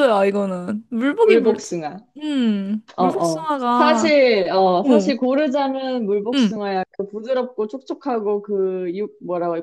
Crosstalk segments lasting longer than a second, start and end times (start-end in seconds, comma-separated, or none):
3.0-4.2